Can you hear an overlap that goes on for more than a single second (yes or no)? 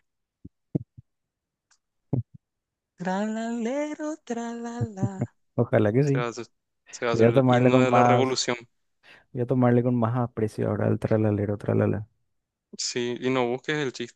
yes